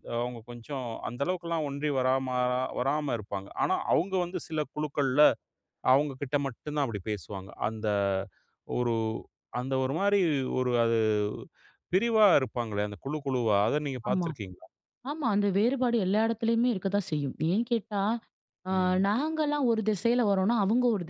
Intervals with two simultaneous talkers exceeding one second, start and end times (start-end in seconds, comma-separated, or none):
none